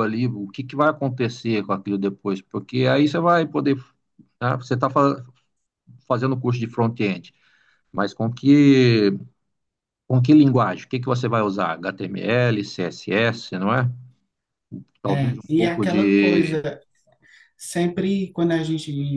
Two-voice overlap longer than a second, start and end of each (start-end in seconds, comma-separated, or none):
15.1-16.6